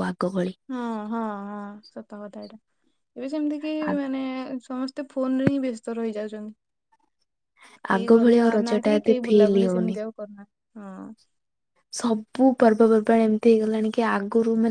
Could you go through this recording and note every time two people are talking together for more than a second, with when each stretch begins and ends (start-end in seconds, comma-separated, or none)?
7.9-9.9